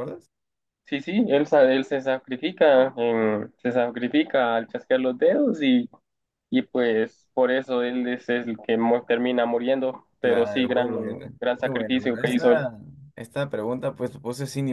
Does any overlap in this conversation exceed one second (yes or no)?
yes